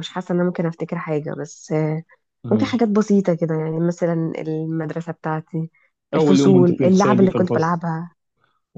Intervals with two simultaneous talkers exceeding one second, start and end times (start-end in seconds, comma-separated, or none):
6.2-7.7